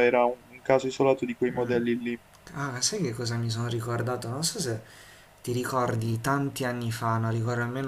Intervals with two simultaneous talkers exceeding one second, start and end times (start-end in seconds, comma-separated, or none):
none